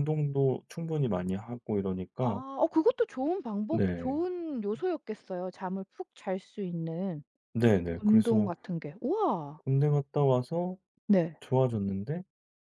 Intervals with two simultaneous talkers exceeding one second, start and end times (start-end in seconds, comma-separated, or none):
none